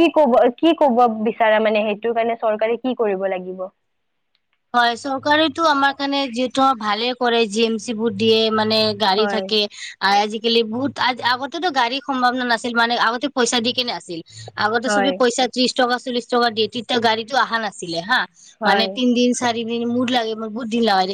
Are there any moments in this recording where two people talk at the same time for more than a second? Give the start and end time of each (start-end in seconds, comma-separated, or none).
none